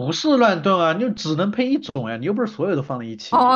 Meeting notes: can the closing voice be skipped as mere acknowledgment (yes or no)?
no